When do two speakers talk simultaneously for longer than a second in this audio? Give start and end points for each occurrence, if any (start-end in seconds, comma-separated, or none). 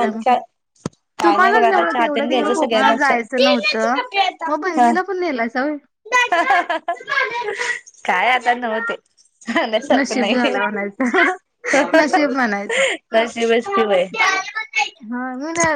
1.2-3.1